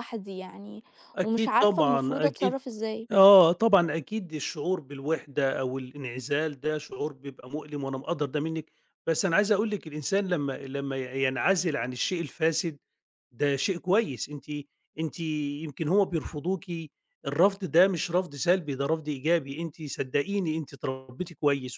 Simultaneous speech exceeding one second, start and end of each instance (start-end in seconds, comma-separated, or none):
1.2-2.6